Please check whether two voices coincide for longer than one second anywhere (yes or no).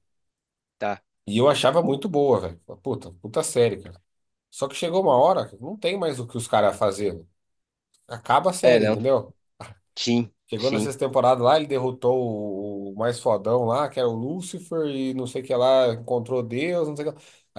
no